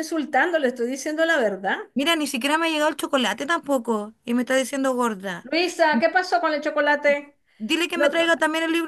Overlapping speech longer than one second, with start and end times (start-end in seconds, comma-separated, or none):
none